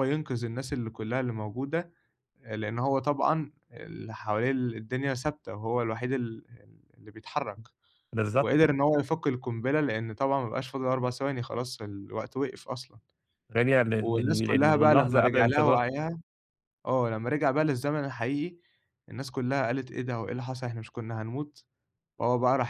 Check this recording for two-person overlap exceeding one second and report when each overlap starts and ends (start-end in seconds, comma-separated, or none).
13.9-15.8